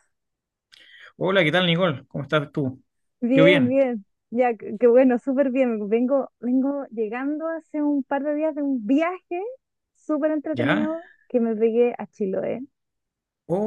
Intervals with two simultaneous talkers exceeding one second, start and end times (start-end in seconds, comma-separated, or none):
none